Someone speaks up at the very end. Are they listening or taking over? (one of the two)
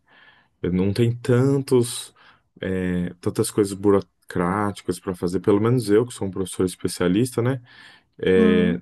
listening